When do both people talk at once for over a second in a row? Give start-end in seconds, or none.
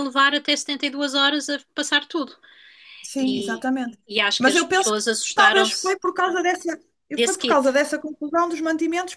4.4-6.0